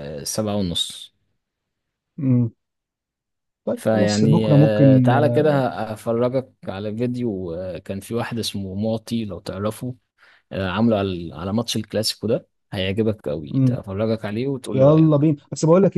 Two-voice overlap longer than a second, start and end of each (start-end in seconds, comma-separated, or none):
3.8-5.1